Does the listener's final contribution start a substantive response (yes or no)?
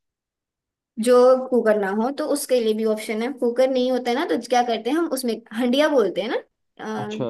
no